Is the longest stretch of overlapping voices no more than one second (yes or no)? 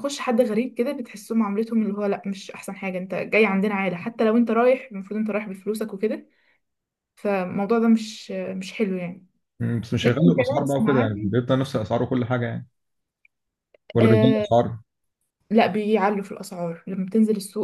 no